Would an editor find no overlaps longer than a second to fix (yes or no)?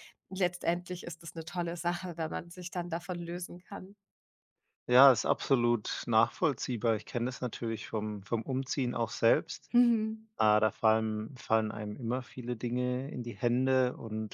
yes